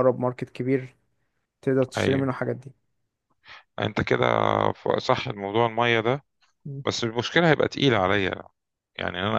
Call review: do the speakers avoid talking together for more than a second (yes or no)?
yes